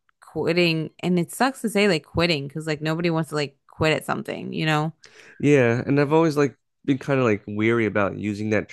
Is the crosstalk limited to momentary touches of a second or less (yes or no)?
yes